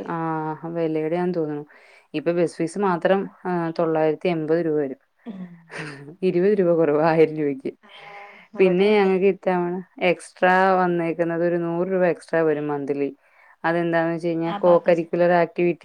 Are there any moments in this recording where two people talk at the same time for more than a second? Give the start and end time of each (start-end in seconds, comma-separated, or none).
none